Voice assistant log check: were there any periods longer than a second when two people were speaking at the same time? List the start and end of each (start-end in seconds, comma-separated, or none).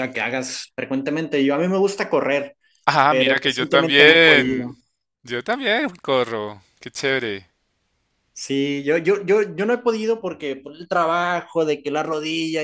3.1-4.8